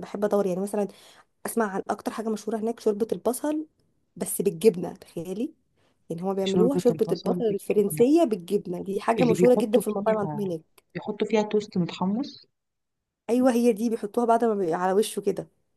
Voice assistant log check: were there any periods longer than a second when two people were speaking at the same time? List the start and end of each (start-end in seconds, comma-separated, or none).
6.4-8.1, 9.2-10.5